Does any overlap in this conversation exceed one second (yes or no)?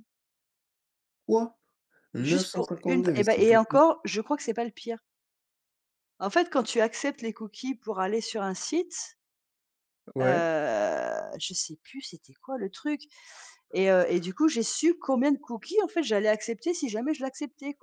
yes